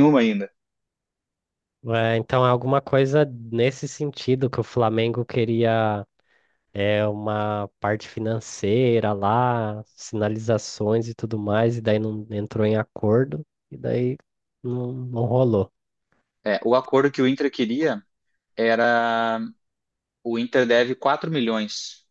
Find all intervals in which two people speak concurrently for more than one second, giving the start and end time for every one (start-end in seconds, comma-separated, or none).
none